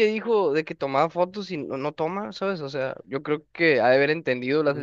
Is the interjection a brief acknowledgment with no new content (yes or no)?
no